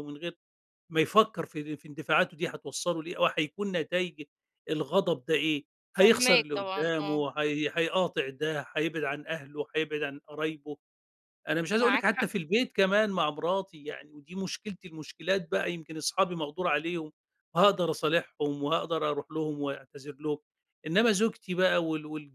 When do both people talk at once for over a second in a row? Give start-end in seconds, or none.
5.9-7.2